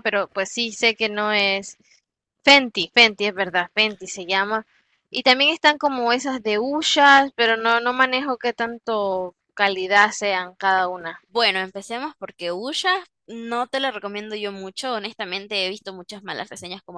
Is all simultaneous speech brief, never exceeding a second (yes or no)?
yes